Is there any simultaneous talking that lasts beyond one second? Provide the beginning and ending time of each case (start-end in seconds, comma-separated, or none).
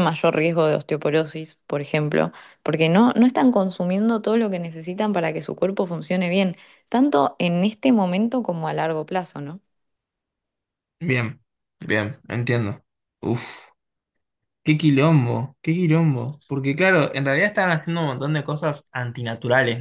none